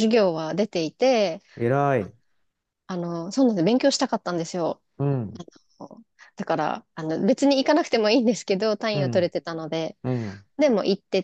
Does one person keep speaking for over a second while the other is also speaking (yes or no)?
no